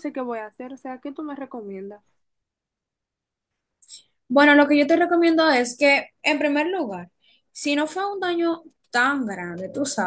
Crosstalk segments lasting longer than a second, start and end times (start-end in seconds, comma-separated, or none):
none